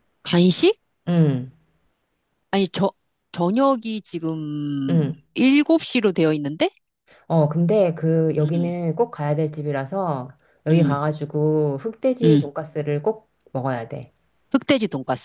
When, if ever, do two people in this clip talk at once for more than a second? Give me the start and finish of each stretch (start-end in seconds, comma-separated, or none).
none